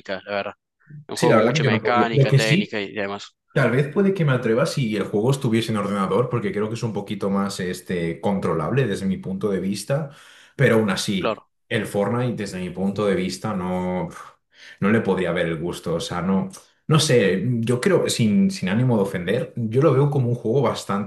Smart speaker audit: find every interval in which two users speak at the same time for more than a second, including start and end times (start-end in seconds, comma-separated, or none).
1.1-2.8